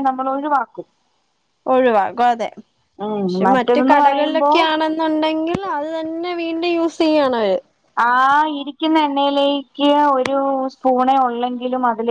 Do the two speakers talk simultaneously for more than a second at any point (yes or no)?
yes